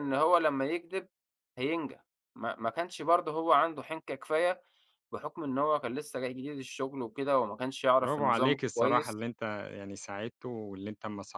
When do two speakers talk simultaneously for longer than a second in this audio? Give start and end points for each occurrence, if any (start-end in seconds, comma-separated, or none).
8.0-9.2